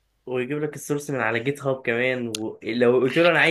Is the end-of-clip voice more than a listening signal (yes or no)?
no